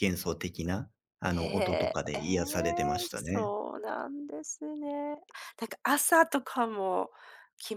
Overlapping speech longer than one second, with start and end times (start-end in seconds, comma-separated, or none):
1.3-3.5